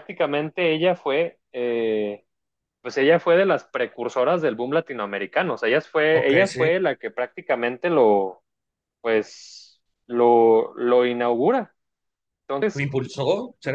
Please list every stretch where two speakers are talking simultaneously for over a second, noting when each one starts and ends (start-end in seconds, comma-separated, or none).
none